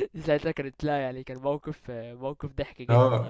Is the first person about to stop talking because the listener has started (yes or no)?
yes